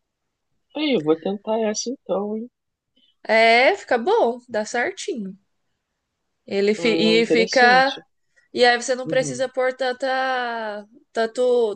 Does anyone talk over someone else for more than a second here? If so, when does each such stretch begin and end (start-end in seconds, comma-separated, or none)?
6.8-8.0